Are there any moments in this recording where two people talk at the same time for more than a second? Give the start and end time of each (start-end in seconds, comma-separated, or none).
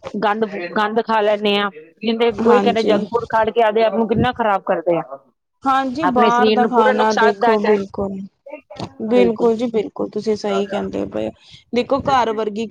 6.1-7.7